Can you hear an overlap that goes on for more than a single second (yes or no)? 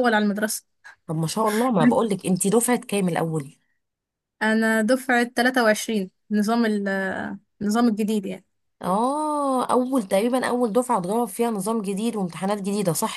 no